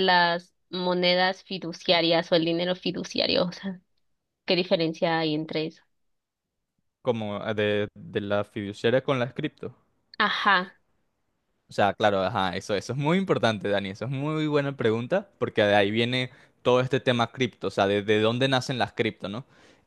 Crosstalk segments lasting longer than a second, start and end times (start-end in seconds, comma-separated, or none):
none